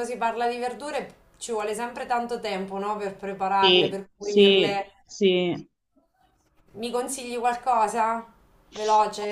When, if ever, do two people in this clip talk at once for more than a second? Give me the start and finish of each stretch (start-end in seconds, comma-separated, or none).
3.6-4.9